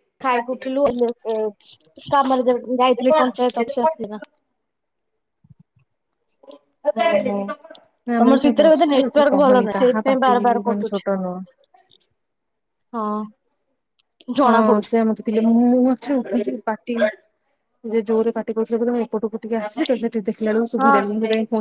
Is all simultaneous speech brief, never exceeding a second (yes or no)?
no